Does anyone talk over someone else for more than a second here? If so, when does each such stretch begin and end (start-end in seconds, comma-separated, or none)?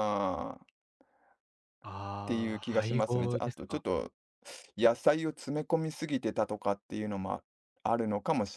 2.2-3.8